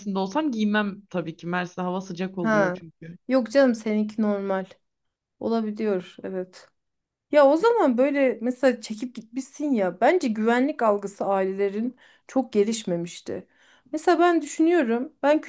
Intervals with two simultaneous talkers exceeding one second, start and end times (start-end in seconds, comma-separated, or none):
none